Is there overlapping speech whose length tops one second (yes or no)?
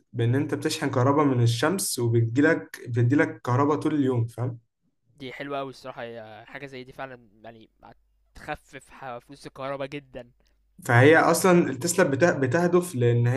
no